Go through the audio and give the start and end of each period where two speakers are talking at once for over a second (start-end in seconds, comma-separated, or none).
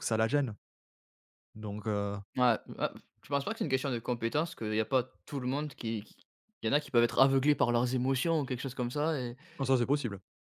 none